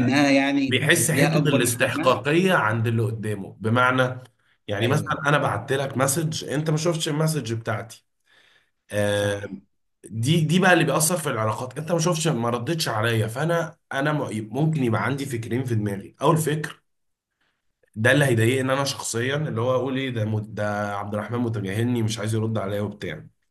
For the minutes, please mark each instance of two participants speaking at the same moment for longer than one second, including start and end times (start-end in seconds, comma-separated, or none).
0.7-2.2